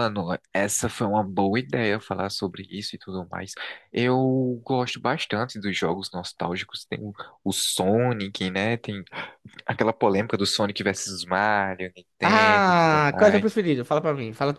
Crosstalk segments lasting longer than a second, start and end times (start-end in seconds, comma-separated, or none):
12.3-13.6